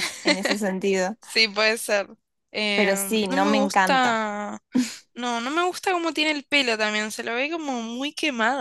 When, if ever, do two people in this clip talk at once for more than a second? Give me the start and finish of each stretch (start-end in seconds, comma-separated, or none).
2.8-4.2